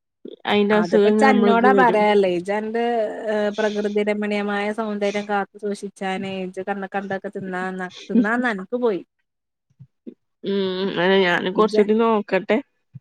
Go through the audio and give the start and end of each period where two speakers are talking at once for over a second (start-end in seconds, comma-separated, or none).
0.8-2.0